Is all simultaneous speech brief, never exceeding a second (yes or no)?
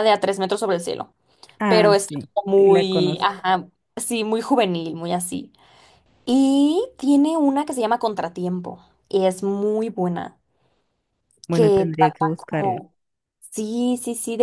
no